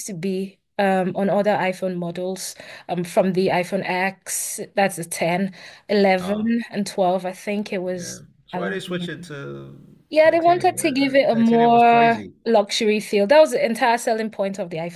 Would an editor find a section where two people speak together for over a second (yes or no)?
yes